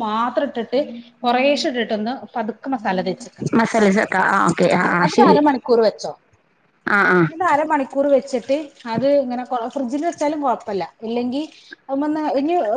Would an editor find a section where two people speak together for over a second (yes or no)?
no